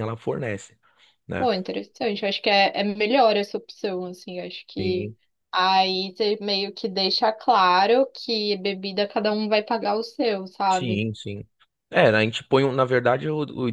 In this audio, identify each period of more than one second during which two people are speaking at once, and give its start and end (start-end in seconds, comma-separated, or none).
none